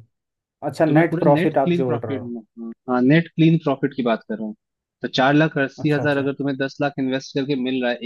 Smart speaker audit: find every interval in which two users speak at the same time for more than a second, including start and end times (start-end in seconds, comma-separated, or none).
0.9-2.3